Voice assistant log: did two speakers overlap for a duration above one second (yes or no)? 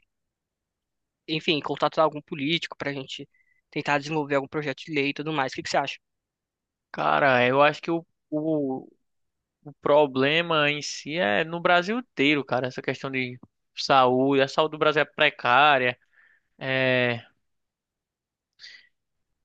no